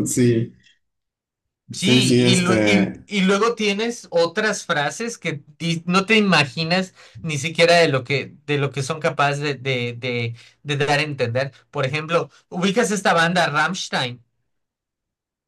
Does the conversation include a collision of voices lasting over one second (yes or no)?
yes